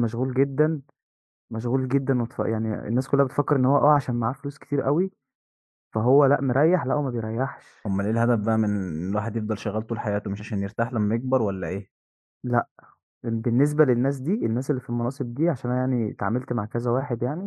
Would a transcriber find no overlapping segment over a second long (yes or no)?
yes